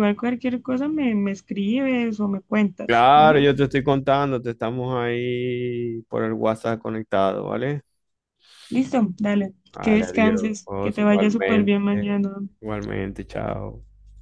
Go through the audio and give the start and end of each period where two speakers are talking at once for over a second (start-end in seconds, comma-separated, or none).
9.7-11.7